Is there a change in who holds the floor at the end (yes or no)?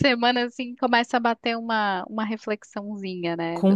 yes